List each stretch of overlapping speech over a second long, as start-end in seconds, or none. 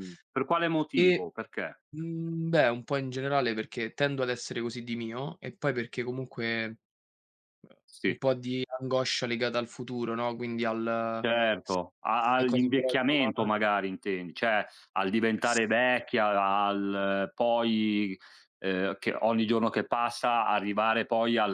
12.2-13.5